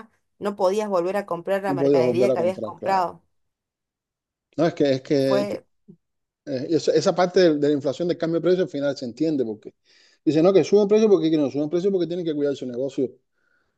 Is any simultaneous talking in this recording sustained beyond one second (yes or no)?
yes